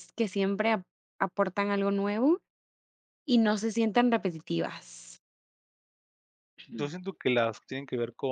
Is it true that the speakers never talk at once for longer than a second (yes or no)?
yes